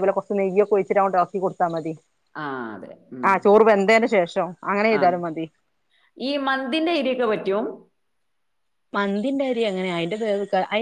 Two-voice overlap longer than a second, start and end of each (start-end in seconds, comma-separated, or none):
none